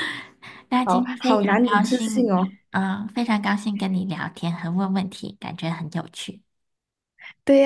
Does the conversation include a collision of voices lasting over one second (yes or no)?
yes